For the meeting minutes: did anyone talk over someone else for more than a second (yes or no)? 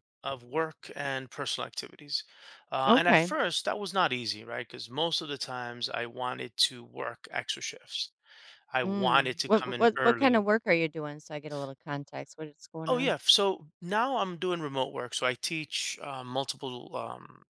yes